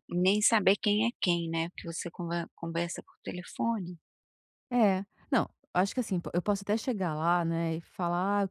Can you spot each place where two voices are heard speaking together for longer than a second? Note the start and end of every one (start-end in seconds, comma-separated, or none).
none